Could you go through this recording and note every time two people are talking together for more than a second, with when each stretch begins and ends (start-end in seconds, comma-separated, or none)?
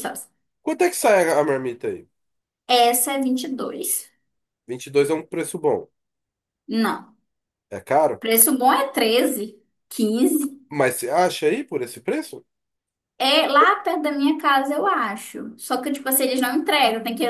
none